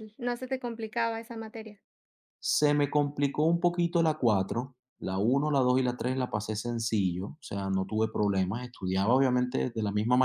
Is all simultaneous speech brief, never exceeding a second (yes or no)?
yes